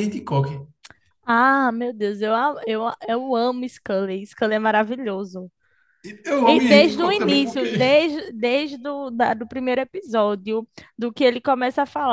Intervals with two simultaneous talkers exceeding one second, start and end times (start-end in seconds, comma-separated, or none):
6.4-7.7